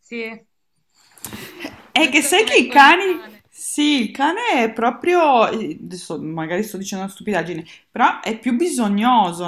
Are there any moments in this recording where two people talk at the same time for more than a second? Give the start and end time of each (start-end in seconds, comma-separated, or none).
2.0-3.4